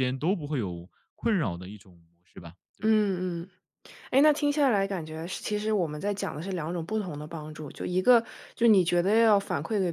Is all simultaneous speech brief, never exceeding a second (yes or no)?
yes